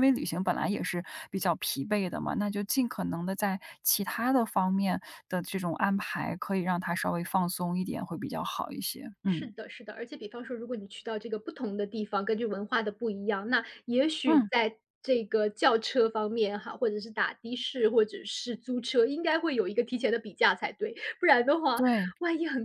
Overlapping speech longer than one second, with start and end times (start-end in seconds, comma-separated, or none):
none